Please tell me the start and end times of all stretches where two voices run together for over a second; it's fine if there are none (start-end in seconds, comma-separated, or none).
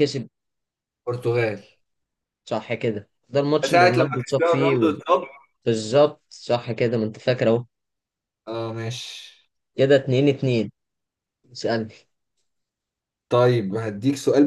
3.7-4.9